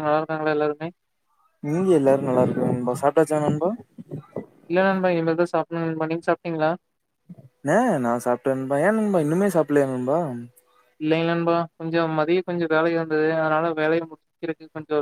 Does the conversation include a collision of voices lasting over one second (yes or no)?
no